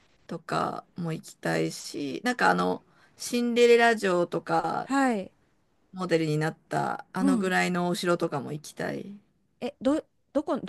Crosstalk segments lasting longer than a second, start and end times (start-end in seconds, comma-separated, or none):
none